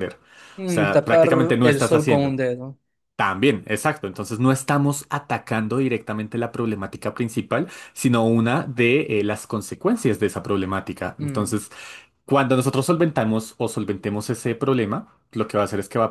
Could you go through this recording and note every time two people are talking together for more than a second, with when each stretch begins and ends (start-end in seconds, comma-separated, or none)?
0.6-2.4